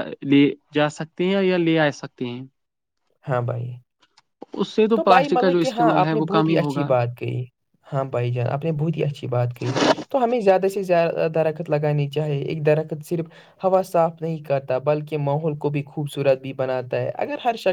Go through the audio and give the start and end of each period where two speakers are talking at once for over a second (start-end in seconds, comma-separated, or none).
4.9-6.8